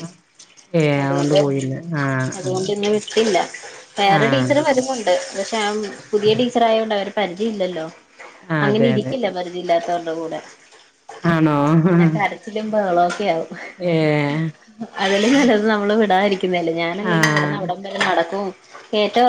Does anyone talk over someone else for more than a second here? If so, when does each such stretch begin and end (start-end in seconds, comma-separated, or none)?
none